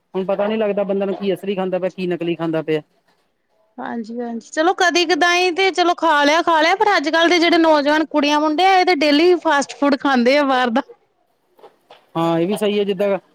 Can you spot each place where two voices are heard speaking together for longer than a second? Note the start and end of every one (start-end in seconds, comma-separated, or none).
none